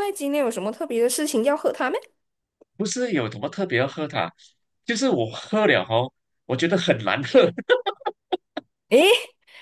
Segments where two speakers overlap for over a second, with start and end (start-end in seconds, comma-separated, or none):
none